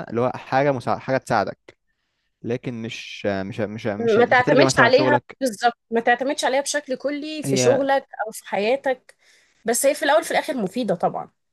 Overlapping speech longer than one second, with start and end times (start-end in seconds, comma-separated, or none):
4.0-5.4